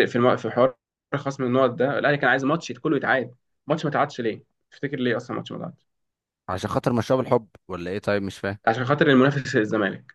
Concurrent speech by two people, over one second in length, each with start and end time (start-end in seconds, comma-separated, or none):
none